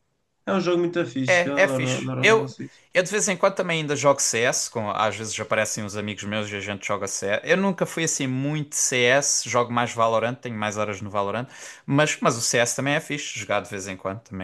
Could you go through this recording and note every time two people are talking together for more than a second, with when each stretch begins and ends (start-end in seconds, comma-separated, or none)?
1.3-2.5